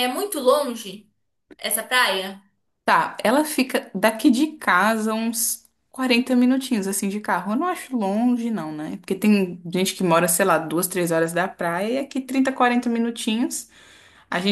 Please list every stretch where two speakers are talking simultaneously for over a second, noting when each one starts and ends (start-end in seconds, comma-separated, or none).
none